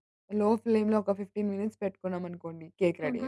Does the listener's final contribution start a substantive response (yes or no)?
yes